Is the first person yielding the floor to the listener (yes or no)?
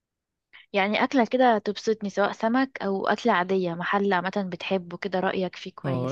yes